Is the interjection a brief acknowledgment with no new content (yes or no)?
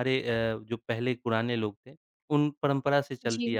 yes